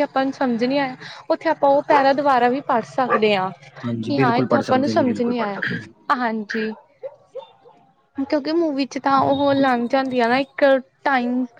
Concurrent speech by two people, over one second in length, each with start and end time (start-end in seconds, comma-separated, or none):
4.1-5.3